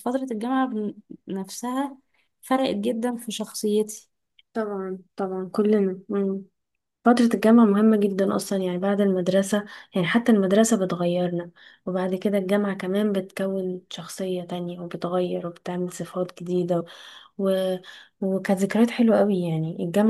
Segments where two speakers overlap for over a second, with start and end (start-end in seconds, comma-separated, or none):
none